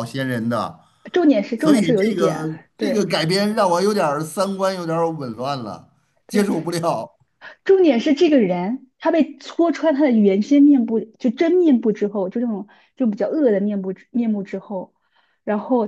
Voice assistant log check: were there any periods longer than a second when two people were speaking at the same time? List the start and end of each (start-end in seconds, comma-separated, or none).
1.6-3.1